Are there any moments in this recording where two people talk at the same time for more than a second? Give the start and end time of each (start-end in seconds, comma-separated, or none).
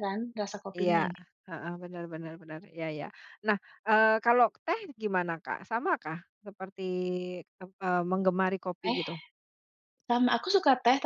none